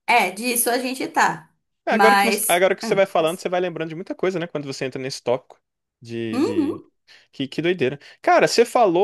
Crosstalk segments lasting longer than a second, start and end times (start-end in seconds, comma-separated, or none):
1.9-3.4